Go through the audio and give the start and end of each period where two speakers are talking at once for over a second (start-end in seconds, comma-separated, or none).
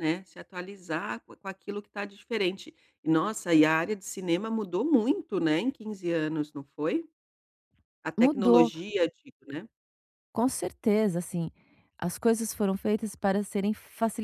none